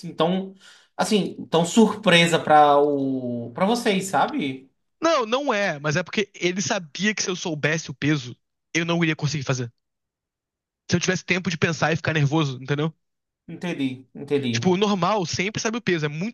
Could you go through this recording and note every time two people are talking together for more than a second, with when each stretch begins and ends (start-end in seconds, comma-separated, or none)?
none